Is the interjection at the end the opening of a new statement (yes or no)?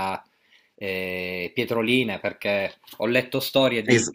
no